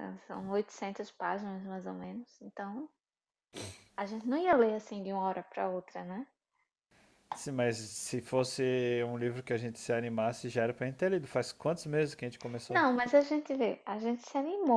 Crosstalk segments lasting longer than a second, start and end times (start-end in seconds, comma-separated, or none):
none